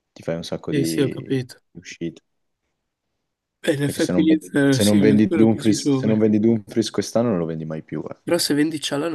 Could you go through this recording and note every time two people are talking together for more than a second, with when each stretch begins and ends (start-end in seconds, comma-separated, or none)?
3.8-6.3